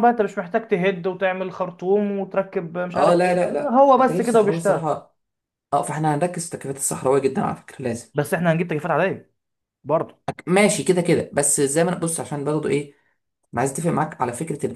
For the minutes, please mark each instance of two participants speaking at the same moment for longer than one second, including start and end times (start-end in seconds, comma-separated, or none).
3.0-4.9